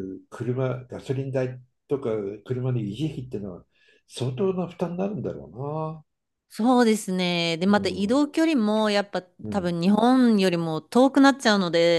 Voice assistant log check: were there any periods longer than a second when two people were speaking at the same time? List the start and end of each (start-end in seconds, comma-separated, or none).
none